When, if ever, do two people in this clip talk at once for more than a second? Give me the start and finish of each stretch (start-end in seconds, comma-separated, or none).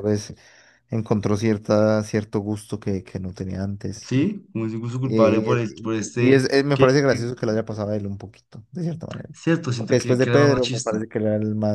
5.0-7.3, 9.7-11.0